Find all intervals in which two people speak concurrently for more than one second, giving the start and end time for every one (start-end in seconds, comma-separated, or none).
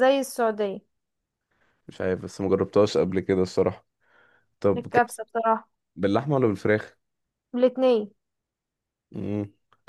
none